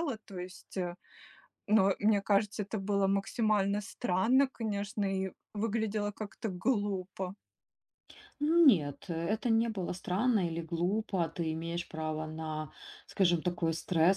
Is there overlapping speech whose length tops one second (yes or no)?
no